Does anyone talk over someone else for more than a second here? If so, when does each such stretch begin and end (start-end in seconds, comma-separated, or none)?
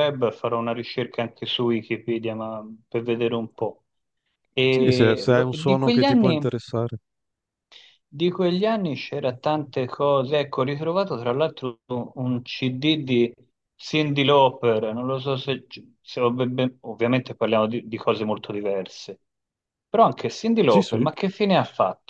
4.7-6.5